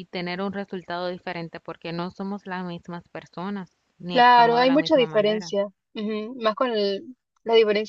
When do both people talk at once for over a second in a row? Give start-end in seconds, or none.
4.1-5.5